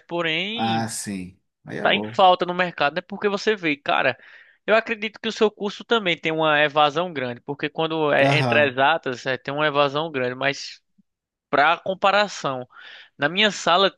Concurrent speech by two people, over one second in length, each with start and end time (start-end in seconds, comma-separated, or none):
none